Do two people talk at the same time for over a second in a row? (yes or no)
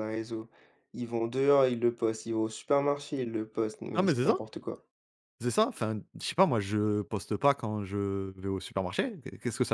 no